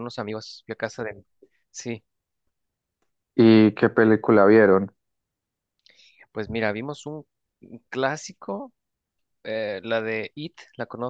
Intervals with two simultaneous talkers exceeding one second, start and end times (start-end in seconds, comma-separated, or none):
none